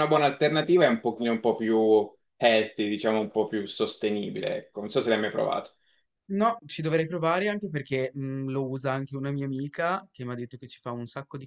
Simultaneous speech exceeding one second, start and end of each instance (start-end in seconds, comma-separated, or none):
none